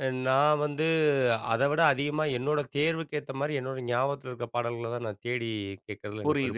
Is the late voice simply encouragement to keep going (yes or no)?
no